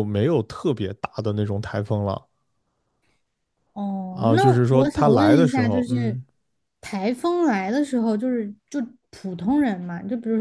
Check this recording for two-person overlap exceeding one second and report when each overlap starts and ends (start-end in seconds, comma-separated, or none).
4.1-6.2